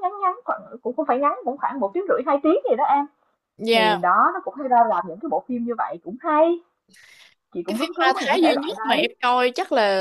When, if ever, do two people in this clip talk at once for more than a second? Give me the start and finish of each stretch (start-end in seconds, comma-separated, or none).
7.7-9.1